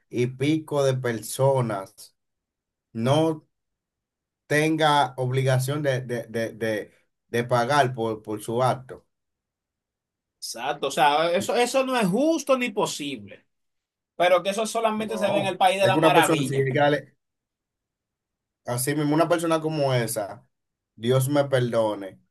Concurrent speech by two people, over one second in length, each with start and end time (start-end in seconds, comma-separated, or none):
15.0-16.7